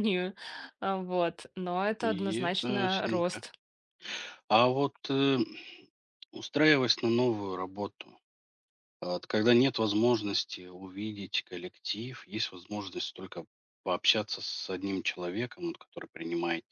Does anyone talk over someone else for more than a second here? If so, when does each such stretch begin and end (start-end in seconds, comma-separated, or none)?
2.0-3.4